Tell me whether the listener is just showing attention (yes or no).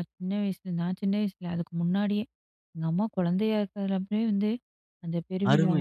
no